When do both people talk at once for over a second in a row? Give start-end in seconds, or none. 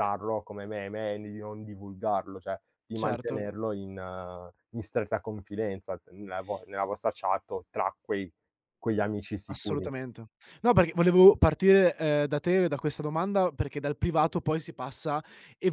none